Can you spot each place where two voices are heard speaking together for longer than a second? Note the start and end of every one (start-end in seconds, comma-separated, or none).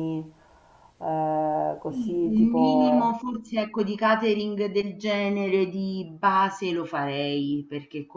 1.9-3.2